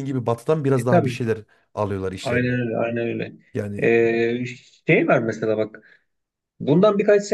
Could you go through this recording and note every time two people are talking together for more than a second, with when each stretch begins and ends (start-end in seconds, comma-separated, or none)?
none